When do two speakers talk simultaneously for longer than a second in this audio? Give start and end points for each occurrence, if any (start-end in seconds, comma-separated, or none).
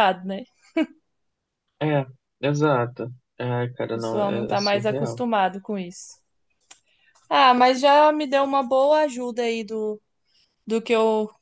3.9-5.2